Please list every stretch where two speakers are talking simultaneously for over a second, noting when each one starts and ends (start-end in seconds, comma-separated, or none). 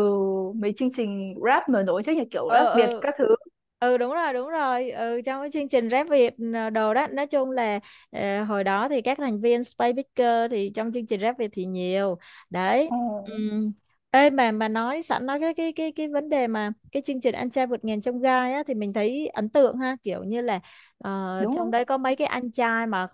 none